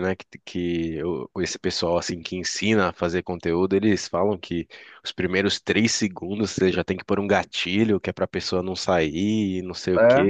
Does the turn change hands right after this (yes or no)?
no